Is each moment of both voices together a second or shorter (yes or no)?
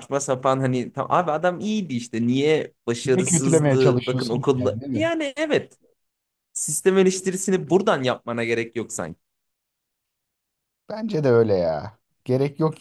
no